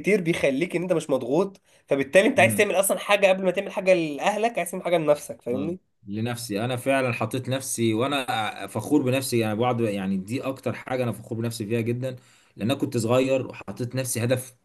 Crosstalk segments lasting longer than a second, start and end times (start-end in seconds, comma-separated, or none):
none